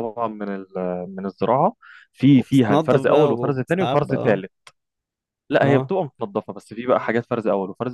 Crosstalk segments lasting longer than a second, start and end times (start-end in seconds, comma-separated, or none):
2.4-4.4